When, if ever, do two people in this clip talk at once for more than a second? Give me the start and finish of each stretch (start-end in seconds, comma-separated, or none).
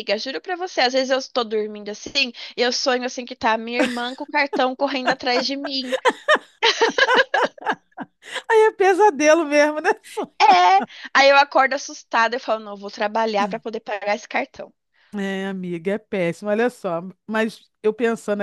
none